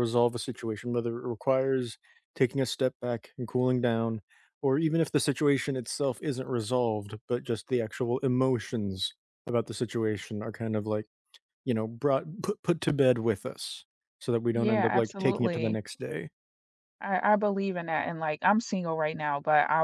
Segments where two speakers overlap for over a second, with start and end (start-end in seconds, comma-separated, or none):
14.5-15.8